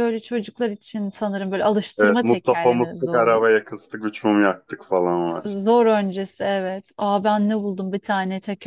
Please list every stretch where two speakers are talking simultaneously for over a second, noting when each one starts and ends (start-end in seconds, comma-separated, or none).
2.0-3.5